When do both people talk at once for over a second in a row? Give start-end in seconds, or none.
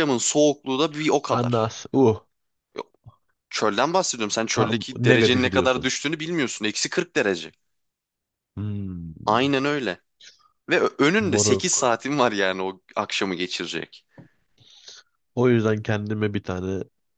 4.5-5.9